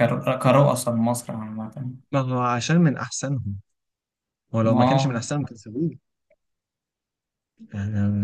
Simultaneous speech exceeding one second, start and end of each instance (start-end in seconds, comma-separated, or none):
none